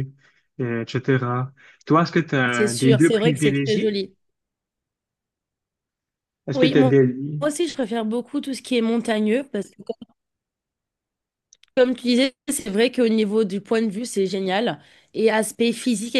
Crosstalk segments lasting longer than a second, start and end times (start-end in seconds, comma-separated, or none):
2.5-3.9